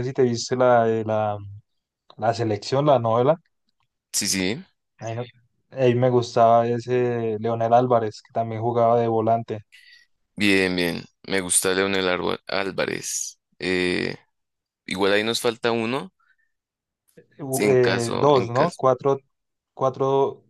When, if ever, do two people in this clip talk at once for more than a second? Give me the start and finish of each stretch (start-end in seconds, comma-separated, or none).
17.6-18.8